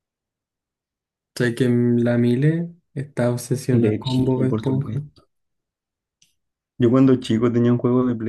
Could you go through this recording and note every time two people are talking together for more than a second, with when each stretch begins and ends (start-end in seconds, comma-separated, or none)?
3.7-5.0